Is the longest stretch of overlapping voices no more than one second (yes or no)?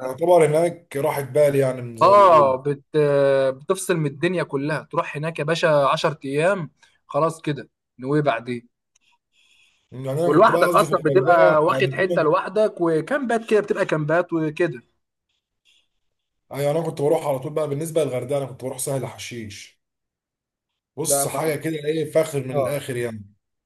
no